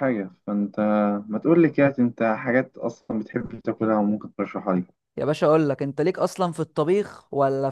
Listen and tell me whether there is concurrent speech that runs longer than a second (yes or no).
no